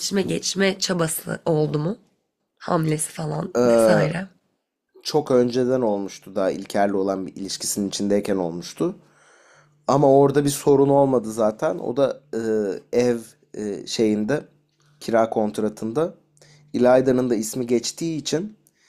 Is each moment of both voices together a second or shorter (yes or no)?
yes